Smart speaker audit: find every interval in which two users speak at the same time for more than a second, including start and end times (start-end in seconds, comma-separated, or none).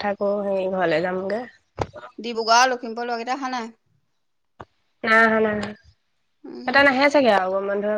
none